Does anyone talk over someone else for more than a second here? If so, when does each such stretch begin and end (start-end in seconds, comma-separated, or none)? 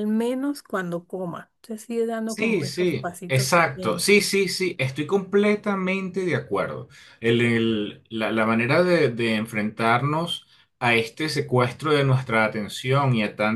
2.2-4.1